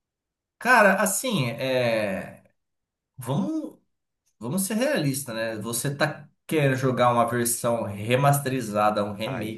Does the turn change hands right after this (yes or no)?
no